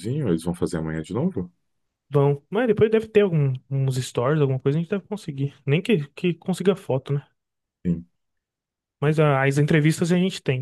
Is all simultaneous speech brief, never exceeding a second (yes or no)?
yes